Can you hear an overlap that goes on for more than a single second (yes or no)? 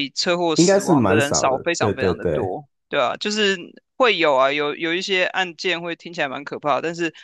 yes